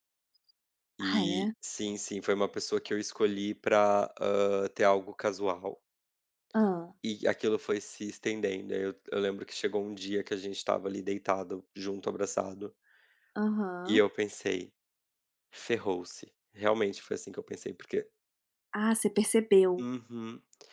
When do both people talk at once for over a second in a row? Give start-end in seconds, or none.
none